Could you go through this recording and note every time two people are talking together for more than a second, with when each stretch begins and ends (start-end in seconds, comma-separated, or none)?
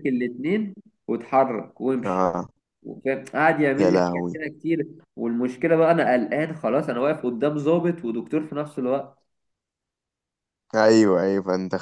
none